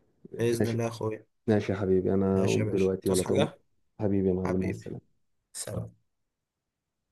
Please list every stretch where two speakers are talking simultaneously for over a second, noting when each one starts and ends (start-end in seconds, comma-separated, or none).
2.3-3.5